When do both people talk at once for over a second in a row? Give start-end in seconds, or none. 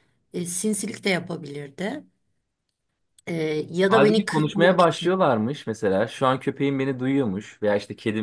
3.9-5.2